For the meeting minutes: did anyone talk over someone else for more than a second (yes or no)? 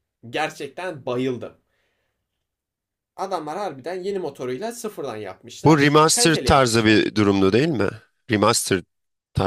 yes